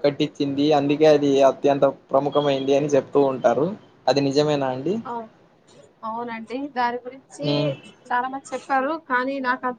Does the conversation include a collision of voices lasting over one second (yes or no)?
no